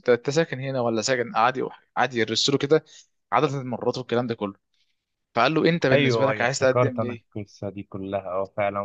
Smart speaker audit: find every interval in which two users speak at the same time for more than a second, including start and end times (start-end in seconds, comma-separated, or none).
5.9-7.2